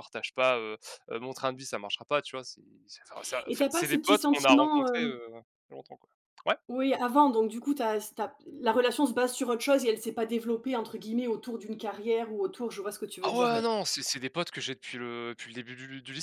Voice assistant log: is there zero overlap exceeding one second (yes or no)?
no